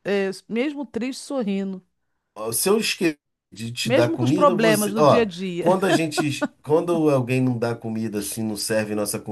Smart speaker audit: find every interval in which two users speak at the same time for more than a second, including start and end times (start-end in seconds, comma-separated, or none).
3.8-5.8